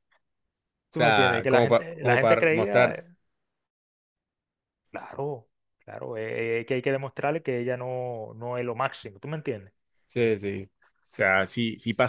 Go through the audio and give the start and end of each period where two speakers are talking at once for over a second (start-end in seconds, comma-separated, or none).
0.9-2.9